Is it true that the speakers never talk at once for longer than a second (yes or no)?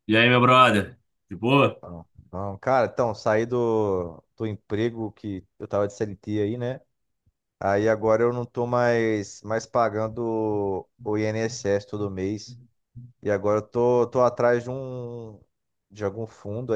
yes